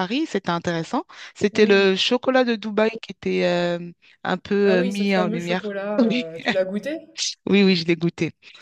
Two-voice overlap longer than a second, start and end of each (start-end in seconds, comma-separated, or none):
4.6-6.3